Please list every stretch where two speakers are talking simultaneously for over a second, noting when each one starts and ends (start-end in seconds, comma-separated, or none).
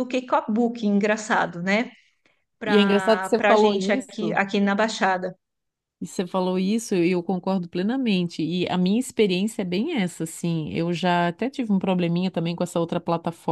2.6-4.4